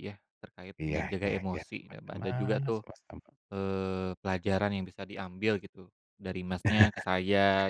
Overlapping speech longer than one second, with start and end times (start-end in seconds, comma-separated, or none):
0.8-2.8